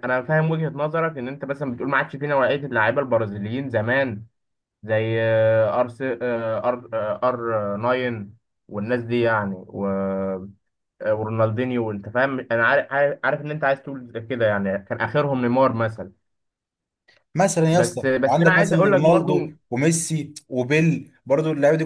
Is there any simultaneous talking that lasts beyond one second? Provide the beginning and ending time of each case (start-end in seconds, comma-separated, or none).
17.7-19.3